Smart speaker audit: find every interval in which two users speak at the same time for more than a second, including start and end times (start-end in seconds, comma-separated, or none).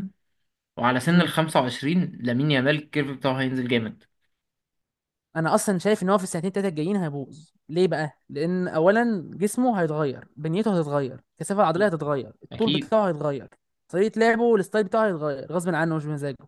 none